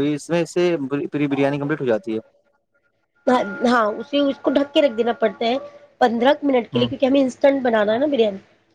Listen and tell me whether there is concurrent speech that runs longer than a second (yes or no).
no